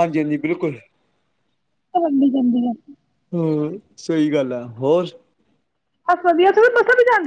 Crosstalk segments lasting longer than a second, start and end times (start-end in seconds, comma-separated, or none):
none